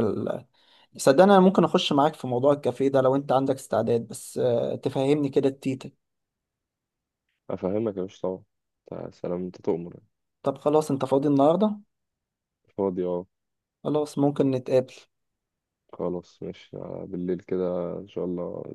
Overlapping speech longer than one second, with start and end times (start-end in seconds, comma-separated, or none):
none